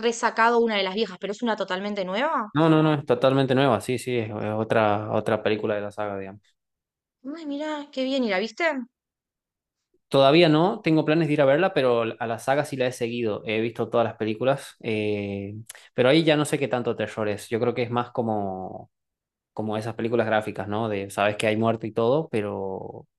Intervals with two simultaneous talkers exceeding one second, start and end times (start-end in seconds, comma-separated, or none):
none